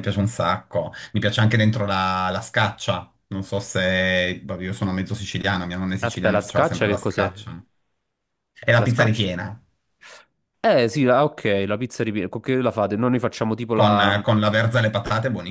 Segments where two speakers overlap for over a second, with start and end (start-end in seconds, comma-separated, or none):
6.0-7.3